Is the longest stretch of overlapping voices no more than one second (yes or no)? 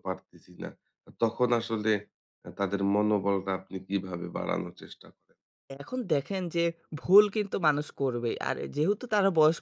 yes